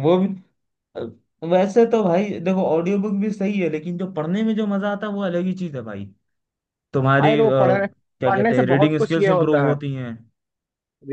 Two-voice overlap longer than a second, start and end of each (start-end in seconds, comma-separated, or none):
8.2-9.8